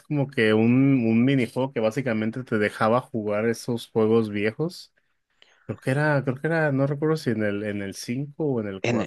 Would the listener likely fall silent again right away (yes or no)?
no